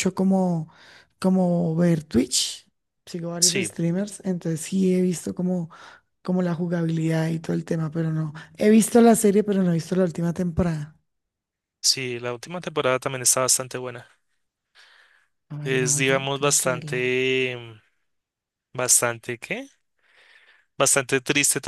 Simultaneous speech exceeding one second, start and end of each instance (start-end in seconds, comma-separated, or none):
15.6-17.1